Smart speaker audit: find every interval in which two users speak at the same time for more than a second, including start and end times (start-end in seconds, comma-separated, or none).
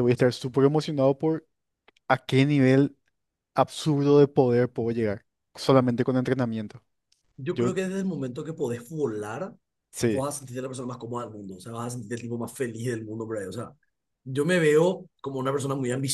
none